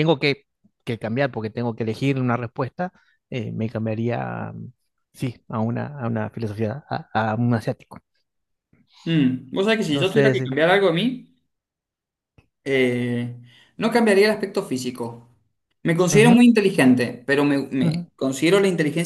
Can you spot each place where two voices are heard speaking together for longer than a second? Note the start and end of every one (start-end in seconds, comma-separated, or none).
none